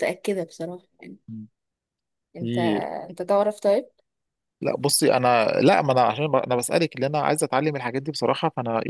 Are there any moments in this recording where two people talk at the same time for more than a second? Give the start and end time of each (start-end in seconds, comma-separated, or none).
none